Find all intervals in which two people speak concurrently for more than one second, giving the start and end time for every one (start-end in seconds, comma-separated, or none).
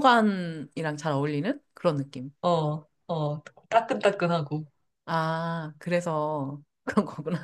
none